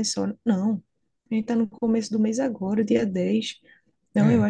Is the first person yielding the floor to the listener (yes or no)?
no